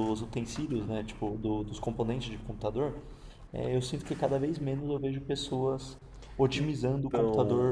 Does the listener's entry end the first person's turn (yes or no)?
yes